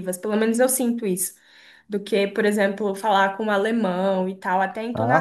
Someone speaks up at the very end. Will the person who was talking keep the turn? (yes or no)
no